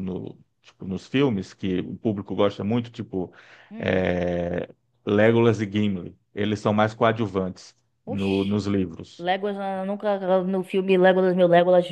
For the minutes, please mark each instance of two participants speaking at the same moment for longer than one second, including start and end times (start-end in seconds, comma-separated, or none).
none